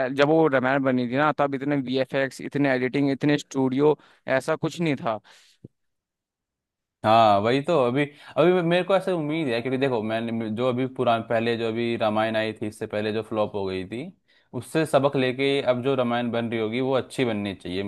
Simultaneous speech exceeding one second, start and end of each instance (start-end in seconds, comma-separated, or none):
none